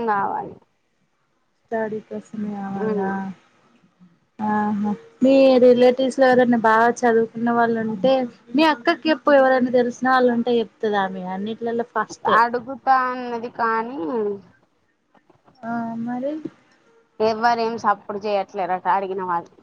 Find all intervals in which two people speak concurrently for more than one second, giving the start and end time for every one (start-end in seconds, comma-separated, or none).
none